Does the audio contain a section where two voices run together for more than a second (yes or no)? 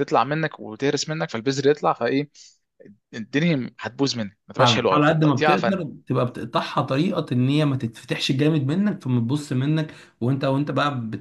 yes